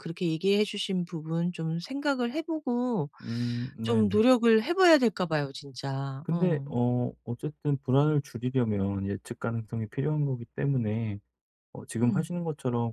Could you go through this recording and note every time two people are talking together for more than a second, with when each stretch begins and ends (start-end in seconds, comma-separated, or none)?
none